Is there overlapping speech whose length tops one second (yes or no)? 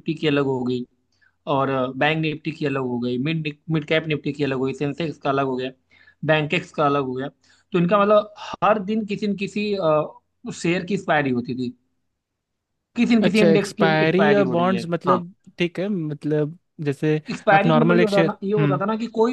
yes